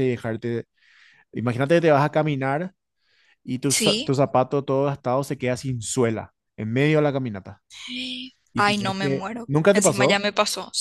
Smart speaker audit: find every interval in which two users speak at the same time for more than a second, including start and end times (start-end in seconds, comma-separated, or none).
8.6-10.2